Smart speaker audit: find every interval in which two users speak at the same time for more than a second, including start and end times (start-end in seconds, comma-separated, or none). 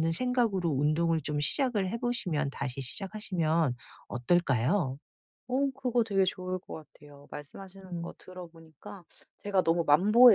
none